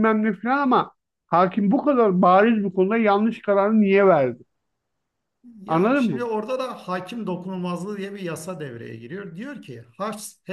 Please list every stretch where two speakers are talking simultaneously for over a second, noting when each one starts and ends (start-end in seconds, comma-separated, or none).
none